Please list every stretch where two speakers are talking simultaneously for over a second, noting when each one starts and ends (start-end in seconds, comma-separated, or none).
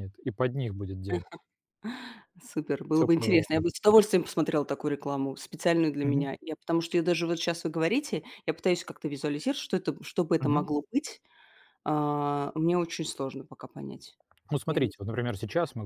none